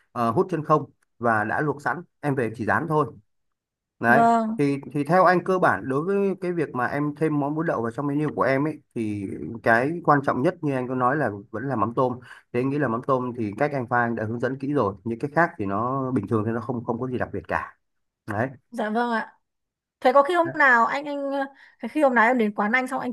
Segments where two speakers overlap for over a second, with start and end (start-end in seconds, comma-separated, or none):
none